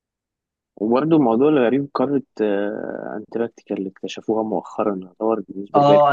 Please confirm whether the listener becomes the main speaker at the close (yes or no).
yes